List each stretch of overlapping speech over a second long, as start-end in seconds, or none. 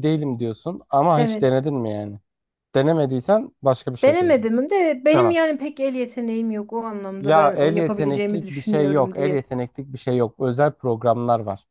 7.2-9.4